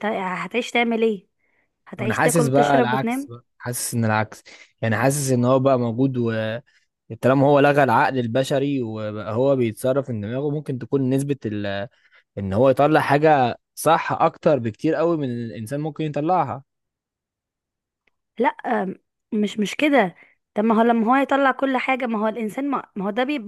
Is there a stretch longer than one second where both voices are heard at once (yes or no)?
yes